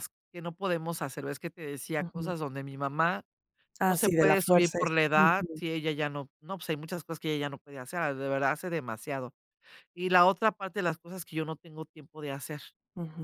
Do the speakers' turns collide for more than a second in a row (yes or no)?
yes